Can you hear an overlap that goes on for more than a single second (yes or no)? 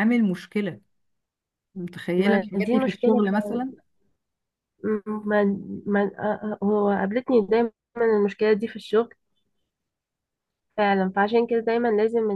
yes